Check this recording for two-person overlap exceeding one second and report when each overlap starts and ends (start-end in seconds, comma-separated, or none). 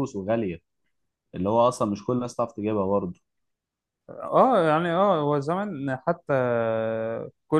none